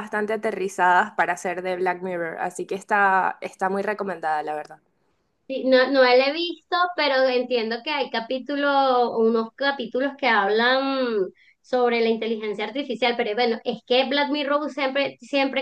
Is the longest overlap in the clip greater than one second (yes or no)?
no